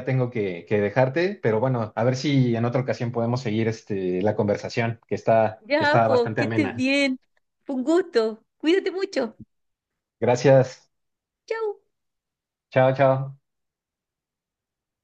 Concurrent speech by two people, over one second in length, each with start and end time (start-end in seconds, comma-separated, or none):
5.6-6.8